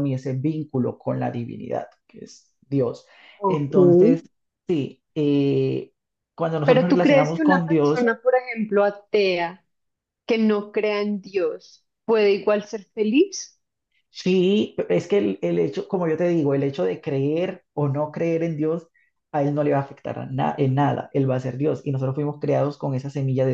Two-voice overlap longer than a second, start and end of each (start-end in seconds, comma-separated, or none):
6.6-8.0